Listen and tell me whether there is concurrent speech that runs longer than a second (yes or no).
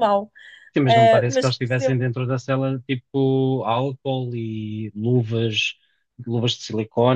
yes